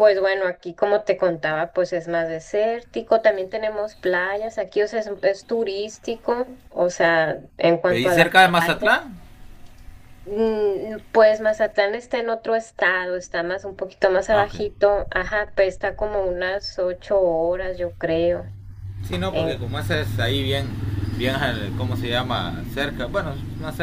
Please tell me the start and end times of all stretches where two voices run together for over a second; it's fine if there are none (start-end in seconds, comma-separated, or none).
7.9-9.1